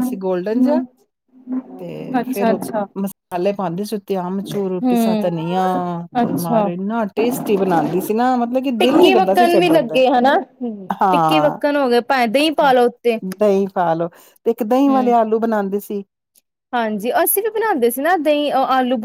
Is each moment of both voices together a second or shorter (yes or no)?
no